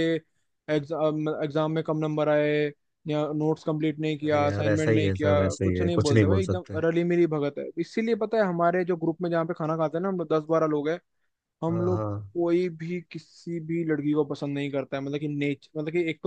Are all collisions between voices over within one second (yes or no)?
no